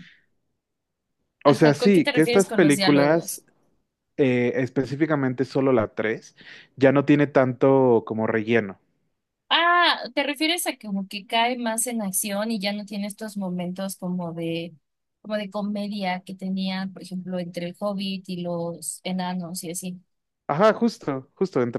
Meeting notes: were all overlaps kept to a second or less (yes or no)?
no